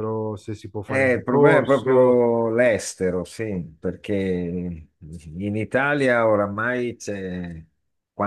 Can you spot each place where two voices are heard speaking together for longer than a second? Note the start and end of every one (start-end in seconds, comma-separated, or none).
0.8-2.2